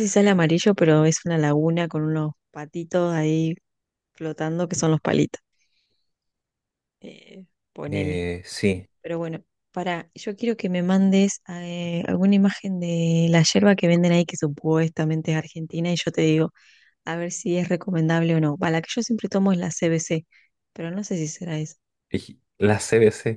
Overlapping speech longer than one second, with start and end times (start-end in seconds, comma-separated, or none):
none